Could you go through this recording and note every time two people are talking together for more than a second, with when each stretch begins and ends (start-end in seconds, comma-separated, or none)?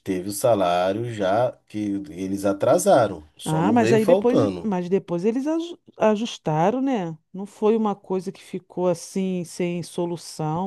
3.4-4.7